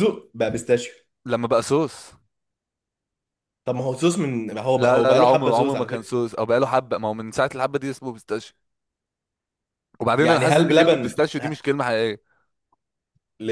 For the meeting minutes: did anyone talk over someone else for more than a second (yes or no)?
yes